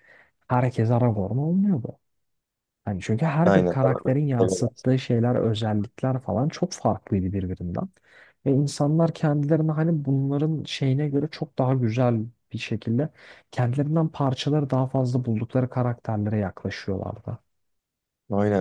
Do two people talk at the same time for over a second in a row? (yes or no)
yes